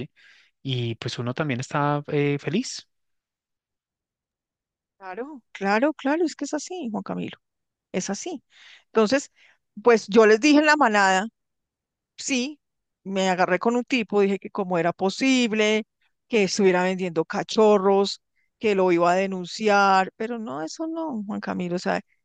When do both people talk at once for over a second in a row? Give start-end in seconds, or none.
none